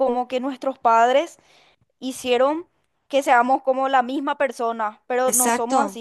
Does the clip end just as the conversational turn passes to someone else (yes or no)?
no